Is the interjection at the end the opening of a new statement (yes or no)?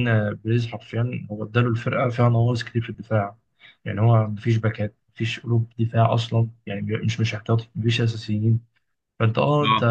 no